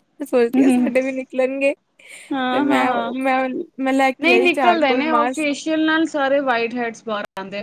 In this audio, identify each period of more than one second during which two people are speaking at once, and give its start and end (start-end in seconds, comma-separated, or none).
4.2-5.5